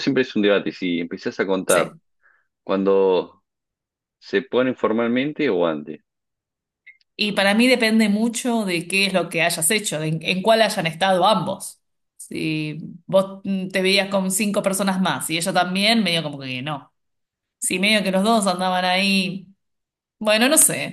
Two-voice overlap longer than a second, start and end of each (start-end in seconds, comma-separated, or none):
none